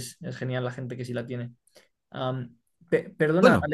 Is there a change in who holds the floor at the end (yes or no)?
no